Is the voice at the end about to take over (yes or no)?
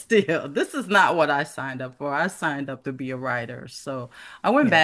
no